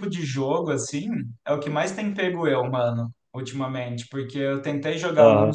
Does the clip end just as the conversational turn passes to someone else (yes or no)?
no